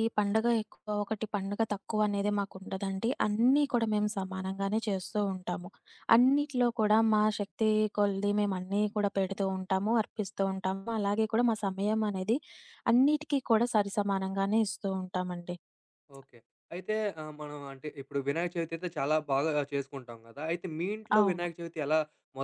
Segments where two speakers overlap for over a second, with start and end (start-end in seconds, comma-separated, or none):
none